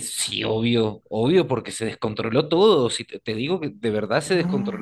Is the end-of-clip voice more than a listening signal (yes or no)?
no